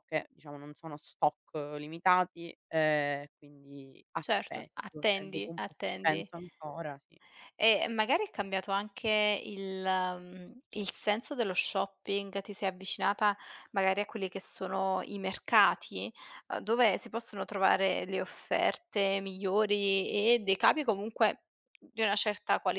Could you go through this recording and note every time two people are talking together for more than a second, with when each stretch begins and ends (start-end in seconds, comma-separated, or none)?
4.2-6.3